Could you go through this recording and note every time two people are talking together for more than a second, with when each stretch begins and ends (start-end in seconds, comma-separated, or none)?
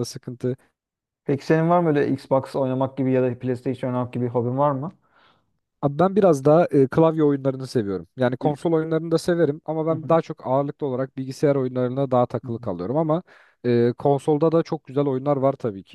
none